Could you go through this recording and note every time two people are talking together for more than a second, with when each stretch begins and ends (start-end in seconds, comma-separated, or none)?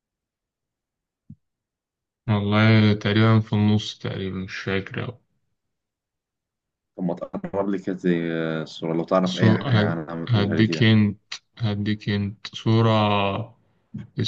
9.2-10.9